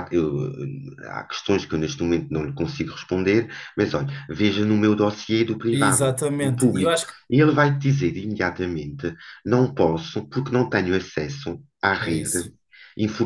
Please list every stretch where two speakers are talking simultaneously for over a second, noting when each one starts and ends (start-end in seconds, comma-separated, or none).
5.7-7.1